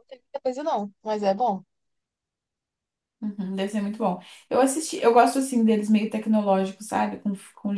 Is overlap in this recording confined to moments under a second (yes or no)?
yes